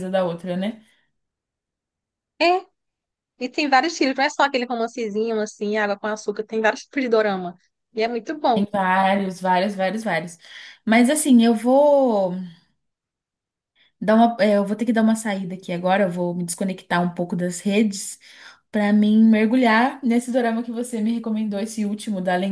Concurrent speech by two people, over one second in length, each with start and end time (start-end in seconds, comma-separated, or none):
none